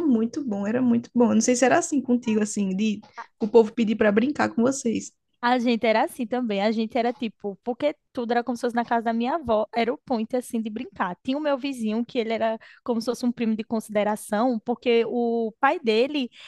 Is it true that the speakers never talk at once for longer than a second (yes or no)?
yes